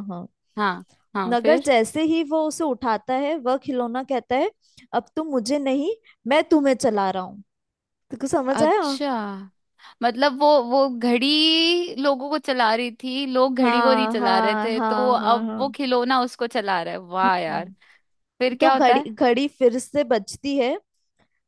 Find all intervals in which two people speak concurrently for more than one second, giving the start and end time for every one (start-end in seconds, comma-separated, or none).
13.6-15.7